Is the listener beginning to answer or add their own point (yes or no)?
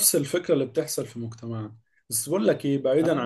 no